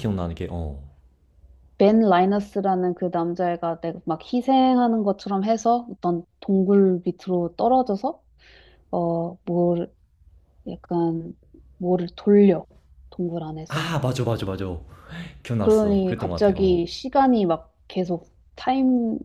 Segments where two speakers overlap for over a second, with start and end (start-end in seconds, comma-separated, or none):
15.6-16.8